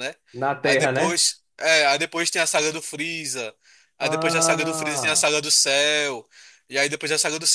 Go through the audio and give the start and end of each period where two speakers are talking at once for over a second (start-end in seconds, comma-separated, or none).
4.0-5.2